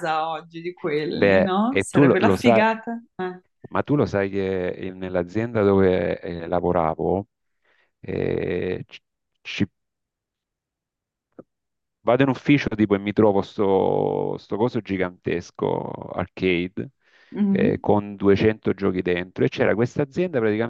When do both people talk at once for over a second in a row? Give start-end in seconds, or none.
1.1-2.7